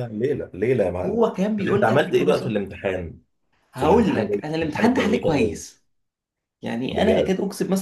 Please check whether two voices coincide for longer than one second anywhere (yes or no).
yes